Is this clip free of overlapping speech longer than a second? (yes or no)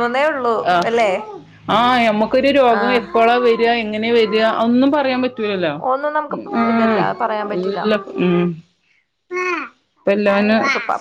yes